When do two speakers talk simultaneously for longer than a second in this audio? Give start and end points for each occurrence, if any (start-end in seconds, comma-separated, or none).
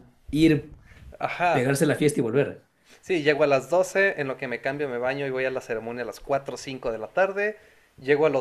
none